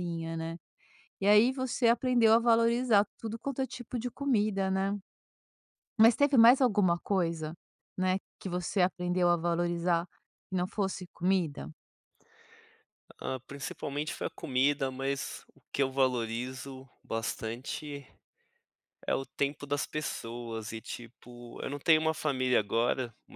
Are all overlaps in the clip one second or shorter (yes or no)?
yes